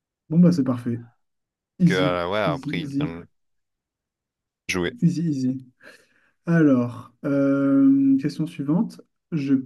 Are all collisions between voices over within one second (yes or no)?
no